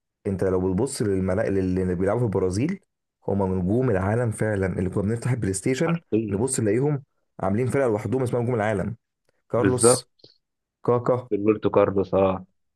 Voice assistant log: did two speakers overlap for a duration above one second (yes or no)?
no